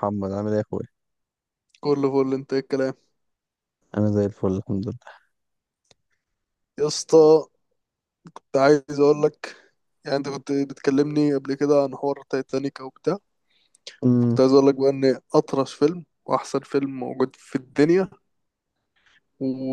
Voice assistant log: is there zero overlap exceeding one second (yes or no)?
yes